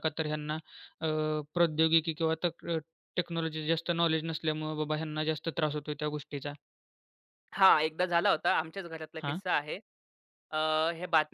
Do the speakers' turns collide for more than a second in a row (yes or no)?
no